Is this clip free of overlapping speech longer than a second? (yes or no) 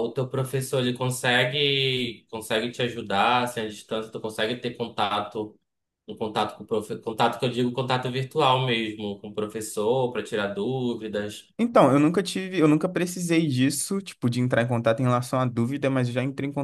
yes